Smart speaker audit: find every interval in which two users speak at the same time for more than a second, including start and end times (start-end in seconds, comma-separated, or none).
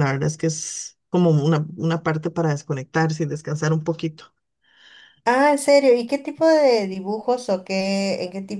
none